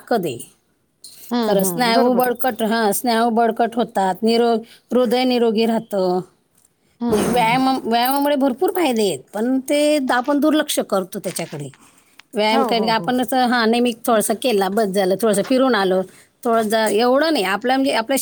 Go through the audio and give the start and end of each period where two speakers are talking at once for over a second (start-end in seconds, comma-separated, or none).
none